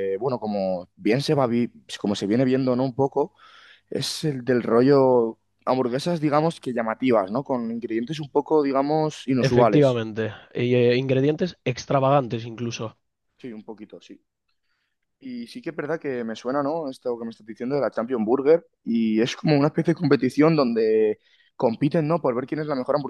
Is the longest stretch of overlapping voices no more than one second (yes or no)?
yes